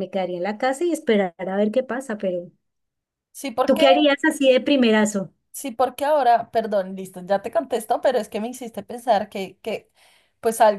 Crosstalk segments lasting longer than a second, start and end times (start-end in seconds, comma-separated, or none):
none